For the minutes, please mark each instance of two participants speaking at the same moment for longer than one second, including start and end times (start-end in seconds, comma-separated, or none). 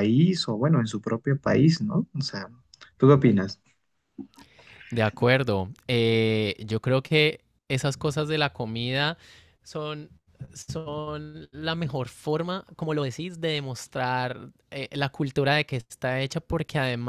none